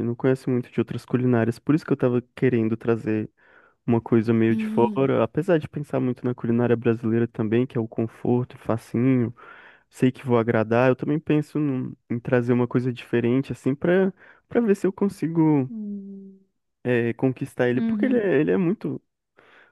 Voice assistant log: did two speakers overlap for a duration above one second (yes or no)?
no